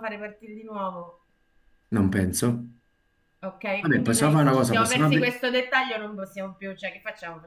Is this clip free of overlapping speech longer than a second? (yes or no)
no